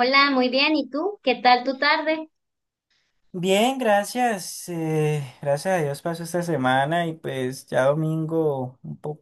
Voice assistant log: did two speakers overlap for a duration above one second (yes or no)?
no